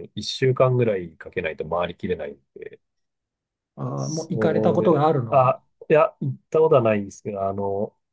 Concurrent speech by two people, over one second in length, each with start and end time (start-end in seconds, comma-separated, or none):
4.0-5.6